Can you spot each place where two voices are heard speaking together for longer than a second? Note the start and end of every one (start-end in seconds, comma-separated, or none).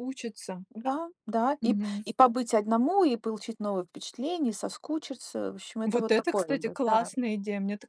5.8-7.1